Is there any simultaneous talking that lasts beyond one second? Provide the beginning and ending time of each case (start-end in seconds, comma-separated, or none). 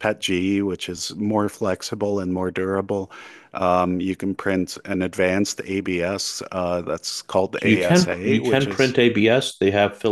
7.6-9.0